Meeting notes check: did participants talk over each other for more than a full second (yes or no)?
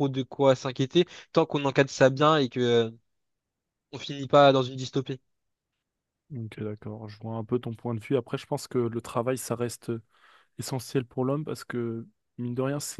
no